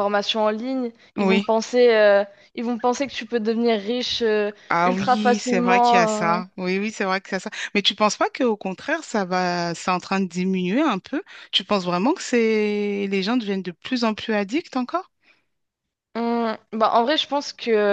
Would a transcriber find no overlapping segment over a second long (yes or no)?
no